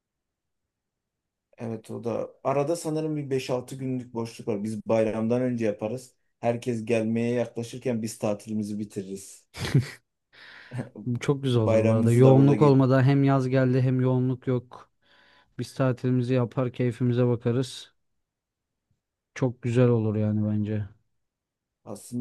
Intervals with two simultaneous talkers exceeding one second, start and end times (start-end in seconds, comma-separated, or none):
11.6-12.8